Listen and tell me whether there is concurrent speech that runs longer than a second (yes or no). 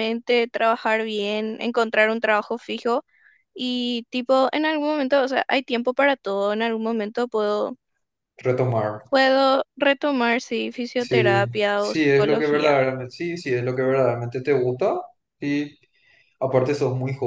yes